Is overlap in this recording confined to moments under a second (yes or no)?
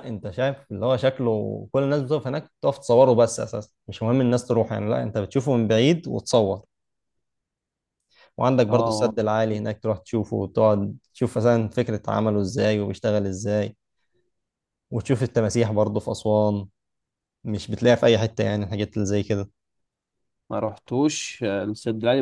yes